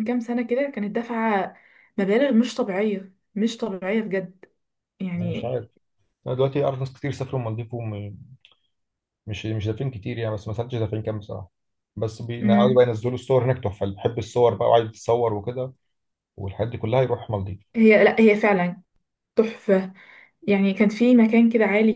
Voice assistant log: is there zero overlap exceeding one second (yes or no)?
yes